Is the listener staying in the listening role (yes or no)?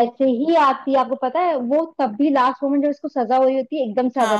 yes